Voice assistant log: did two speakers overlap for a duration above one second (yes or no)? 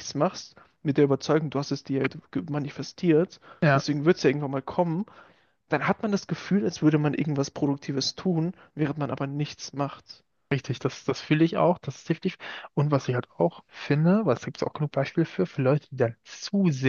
no